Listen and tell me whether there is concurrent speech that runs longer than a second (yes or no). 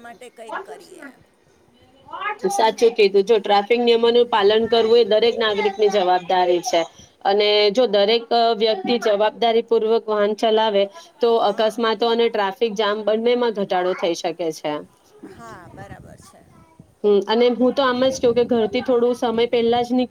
no